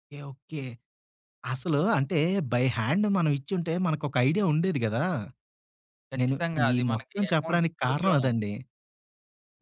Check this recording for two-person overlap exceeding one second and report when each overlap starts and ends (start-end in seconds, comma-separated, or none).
6.2-8.4